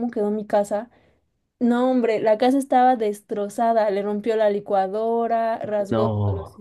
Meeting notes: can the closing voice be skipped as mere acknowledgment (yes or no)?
yes